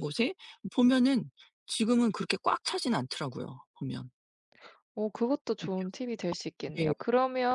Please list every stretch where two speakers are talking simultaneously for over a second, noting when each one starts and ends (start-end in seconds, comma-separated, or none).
none